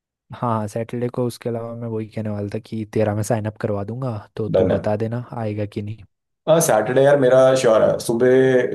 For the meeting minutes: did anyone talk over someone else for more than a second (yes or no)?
no